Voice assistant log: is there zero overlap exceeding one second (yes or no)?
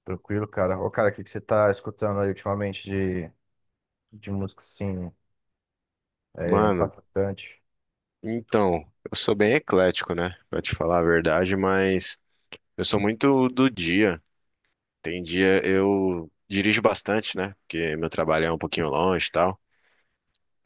yes